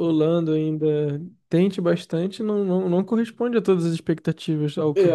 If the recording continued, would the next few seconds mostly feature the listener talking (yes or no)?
yes